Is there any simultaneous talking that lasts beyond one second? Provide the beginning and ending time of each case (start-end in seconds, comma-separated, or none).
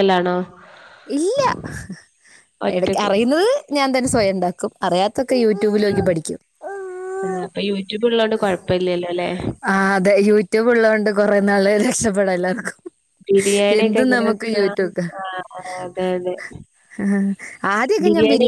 none